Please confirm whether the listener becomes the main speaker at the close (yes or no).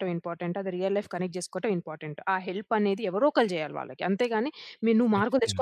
no